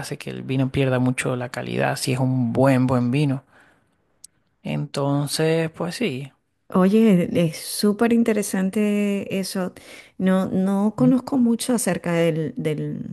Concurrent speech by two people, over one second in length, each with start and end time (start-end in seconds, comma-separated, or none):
none